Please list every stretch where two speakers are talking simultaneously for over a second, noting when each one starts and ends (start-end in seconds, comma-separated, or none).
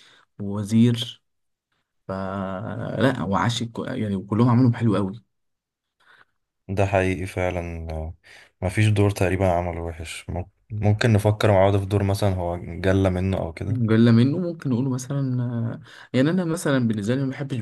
none